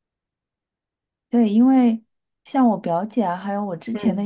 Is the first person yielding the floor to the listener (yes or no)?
no